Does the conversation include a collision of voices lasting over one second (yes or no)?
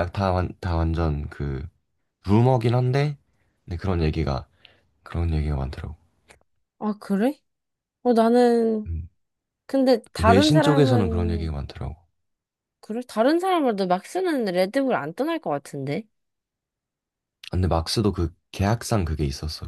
yes